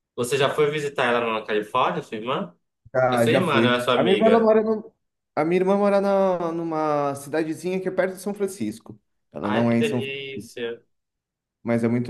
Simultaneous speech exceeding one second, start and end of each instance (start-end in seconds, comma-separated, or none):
3.1-4.6